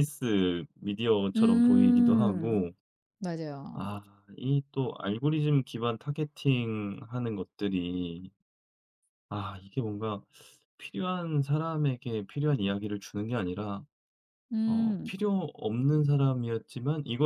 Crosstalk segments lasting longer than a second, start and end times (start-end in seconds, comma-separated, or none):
1.4-2.6